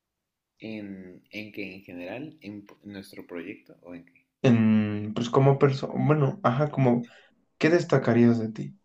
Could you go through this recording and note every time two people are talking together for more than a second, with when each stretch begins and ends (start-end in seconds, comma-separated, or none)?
none